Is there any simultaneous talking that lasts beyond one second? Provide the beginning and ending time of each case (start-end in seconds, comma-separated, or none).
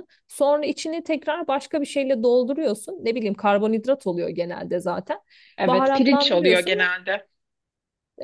5.7-6.9